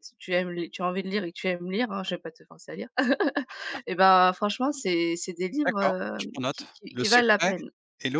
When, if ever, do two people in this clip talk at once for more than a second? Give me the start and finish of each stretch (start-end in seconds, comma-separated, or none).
5.6-7.5